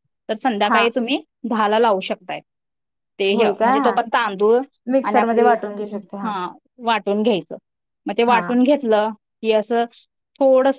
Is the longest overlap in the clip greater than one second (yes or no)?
no